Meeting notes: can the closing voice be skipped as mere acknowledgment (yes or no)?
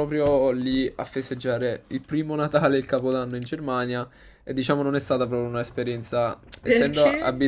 yes